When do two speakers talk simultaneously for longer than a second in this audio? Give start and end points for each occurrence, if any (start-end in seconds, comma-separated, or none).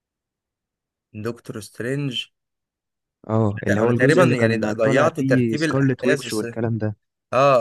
3.7-6.4